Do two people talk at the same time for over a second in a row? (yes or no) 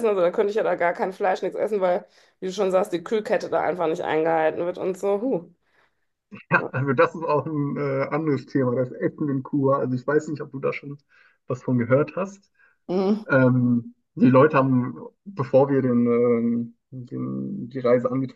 no